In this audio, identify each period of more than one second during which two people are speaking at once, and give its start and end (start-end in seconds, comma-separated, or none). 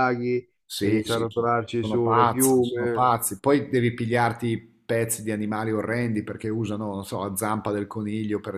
0.8-3.1